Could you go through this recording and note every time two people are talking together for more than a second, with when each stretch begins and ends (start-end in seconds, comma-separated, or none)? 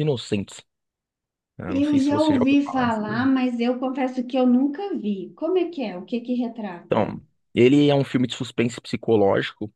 1.6-3.3